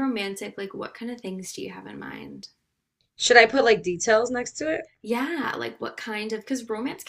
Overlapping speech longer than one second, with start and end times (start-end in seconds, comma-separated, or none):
none